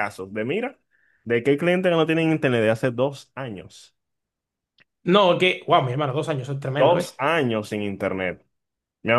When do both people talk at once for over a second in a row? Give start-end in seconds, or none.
none